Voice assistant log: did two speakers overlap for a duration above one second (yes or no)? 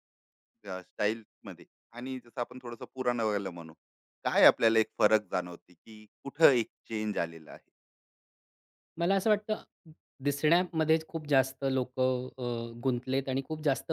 no